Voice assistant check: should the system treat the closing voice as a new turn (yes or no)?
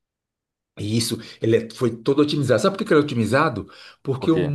no